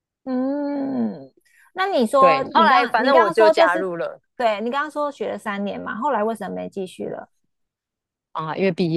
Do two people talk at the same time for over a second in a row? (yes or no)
yes